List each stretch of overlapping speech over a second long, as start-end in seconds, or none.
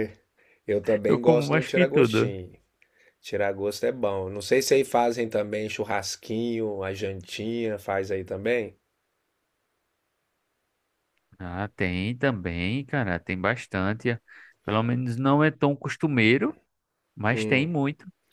1.1-2.4